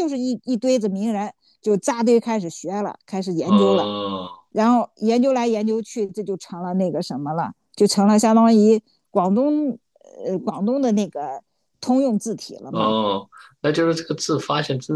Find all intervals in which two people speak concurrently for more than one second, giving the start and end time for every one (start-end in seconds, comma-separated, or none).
none